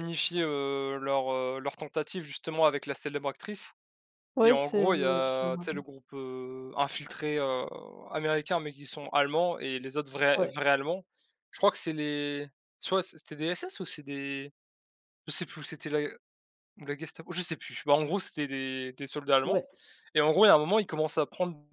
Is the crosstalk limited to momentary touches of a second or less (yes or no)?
no